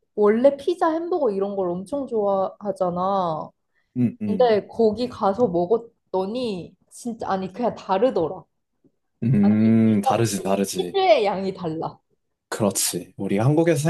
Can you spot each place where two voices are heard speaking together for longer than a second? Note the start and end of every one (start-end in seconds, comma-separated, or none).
9.4-11.0